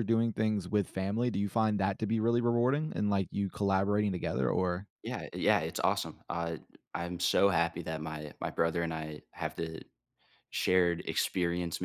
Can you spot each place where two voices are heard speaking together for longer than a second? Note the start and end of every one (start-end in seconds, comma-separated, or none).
none